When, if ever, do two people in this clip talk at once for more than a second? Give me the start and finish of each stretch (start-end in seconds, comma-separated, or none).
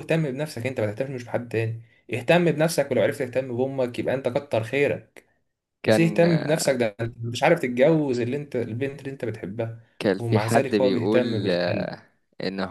10.2-11.9